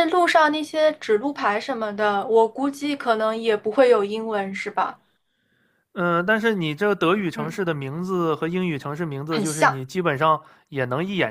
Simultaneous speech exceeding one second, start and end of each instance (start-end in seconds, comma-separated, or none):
none